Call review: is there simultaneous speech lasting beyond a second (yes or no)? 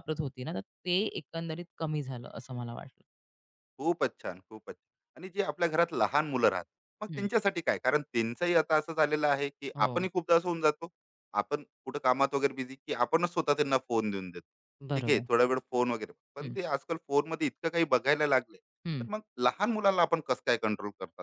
no